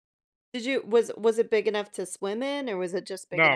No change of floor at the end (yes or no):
no